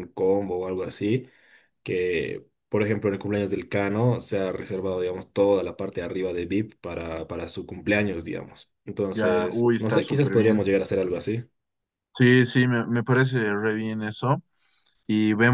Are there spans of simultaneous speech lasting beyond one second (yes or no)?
yes